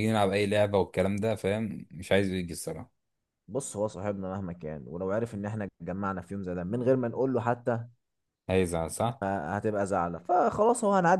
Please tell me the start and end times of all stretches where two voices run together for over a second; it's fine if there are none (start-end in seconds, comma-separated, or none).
none